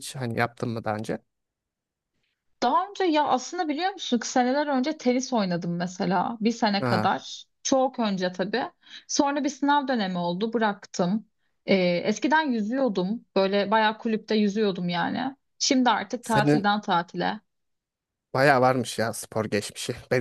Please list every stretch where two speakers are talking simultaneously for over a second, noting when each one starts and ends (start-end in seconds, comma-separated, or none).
none